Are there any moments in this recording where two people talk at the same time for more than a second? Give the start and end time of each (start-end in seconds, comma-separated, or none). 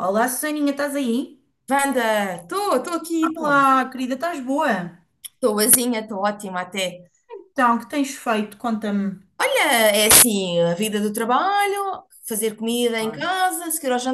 none